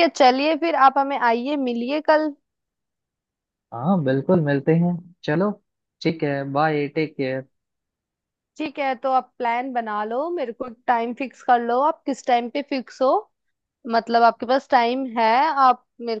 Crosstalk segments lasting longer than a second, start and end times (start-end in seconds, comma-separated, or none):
none